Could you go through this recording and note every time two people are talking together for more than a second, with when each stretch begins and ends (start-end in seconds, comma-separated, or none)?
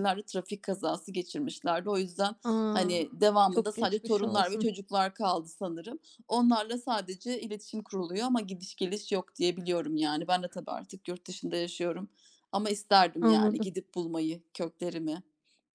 3.5-4.7